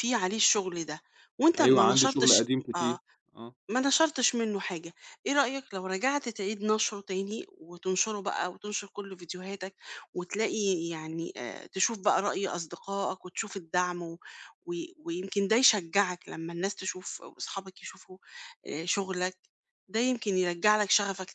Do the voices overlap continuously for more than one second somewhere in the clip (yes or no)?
yes